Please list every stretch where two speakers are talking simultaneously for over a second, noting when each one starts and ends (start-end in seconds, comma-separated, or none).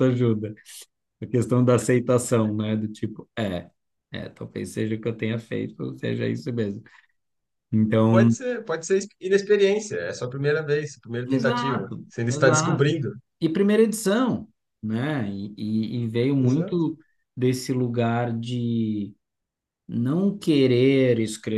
11.3-12.9